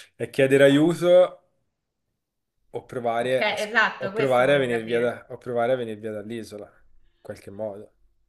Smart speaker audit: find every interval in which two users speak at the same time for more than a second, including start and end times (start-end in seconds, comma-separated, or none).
3.2-5.2